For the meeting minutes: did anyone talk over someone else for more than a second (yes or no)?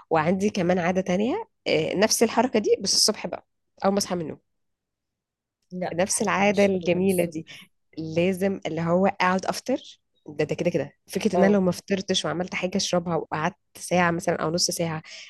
yes